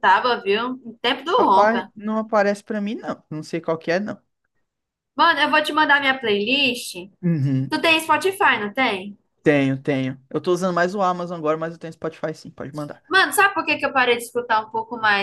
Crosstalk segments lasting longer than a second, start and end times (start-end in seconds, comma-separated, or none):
none